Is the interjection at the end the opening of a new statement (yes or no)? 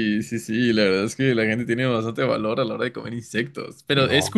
no